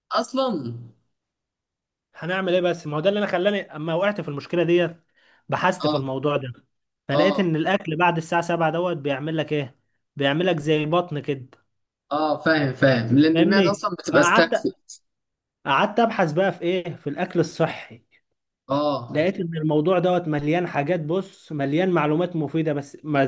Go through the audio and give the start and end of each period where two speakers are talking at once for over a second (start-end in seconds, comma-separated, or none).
13.3-14.7